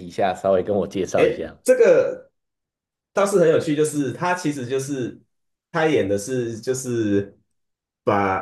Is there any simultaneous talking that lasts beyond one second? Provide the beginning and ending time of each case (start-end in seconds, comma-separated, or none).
none